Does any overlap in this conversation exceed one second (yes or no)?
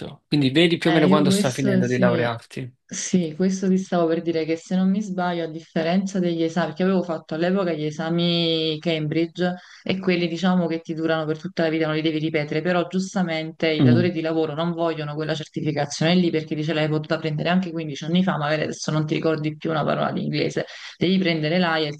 yes